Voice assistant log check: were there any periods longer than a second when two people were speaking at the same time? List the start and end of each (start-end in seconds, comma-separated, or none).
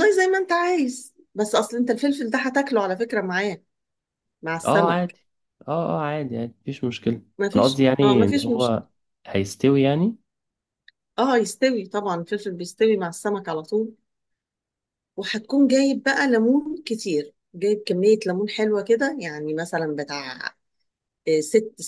7.4-8.8